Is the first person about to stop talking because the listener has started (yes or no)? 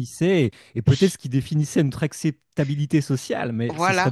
yes